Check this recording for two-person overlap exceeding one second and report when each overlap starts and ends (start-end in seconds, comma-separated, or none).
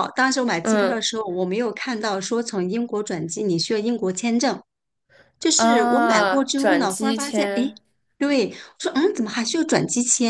5.6-7.7